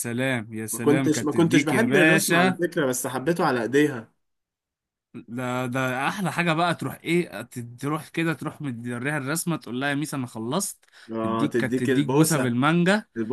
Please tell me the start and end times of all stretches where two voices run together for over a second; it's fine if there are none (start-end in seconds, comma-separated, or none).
0.7-2.6, 11.2-12.6